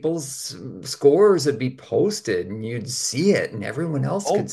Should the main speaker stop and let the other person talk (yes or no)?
yes